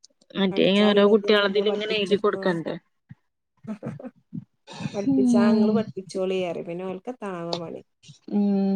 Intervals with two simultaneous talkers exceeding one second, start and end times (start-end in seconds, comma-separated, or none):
0.5-2.6